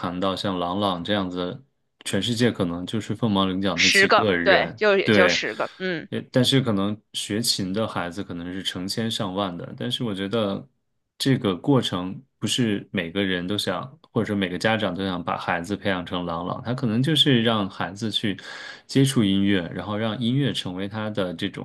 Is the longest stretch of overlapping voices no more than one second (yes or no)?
no